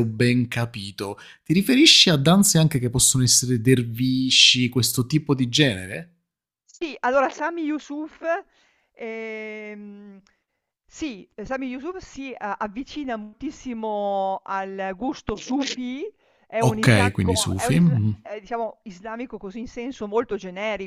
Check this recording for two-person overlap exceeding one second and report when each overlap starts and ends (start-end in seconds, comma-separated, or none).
16.6-18.2